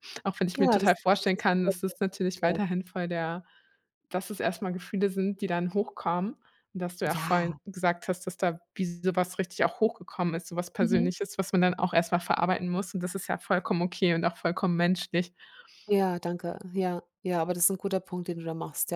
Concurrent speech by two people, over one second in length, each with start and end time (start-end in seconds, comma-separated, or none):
0.5-2.6